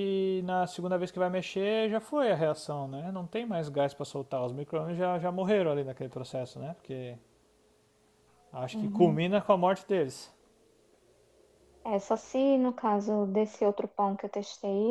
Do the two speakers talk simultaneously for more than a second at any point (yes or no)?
no